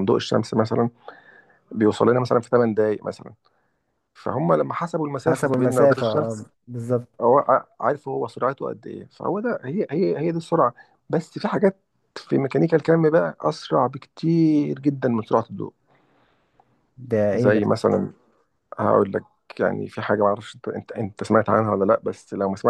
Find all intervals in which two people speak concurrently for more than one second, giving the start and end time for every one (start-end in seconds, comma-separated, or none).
5.3-6.5